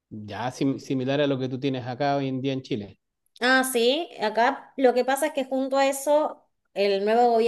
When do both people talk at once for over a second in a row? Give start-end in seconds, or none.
none